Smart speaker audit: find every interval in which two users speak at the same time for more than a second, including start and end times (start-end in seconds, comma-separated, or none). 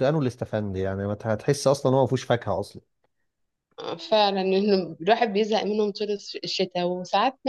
none